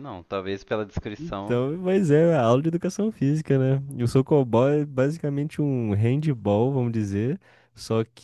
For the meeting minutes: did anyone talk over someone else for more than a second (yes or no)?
no